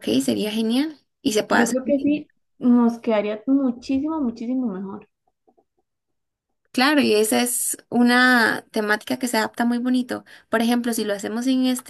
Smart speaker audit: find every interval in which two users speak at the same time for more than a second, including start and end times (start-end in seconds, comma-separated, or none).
none